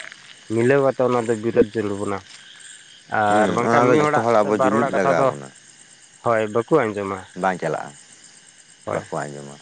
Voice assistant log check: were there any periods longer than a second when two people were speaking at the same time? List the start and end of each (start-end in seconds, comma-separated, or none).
3.3-5.3